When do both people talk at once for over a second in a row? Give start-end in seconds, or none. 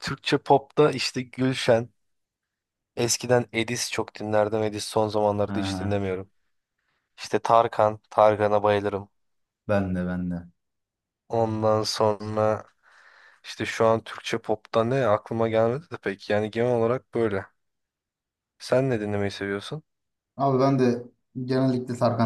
none